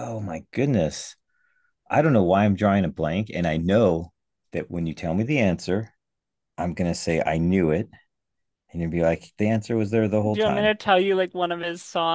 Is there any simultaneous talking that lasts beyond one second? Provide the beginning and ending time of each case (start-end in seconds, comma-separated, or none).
none